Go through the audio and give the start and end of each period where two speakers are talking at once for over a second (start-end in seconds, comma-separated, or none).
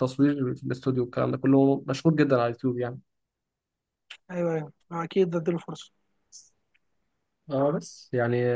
none